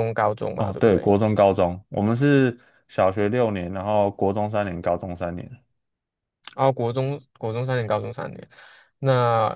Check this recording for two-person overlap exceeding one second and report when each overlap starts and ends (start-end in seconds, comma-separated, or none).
none